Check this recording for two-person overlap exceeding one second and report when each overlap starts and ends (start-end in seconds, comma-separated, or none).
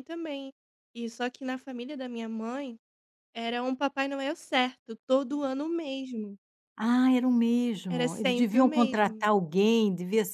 7.9-9.3